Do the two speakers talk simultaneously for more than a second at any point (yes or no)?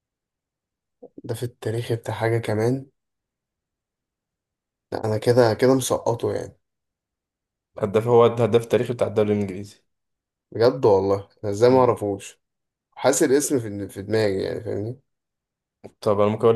no